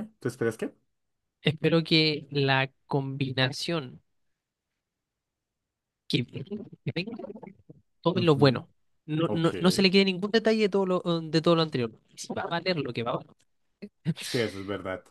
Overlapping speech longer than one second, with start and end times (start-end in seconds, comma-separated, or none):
none